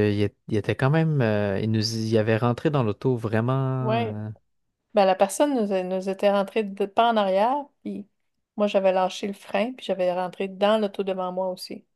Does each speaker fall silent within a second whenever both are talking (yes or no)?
yes